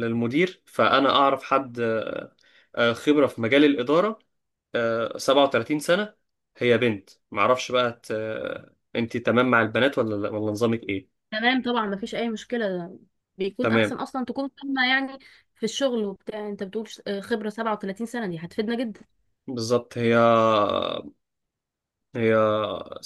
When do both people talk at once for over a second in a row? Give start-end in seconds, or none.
none